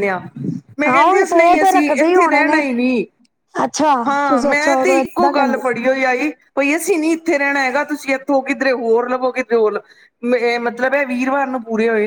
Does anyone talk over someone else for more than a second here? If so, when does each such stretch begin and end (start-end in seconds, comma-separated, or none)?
0.9-2.7, 4.1-5.8